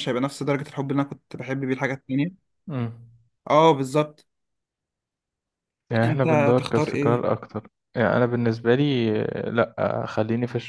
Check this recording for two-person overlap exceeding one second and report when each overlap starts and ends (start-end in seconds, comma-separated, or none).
6.0-7.3